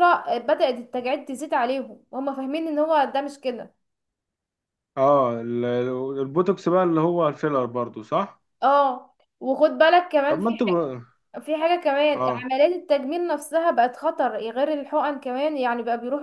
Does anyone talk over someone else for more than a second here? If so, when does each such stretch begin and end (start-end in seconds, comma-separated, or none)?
none